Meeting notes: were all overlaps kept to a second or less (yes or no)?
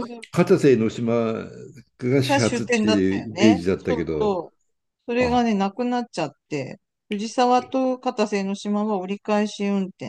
no